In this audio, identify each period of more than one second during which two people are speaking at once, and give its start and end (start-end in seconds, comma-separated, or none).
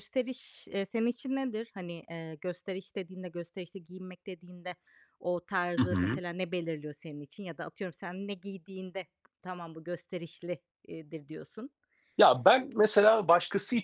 none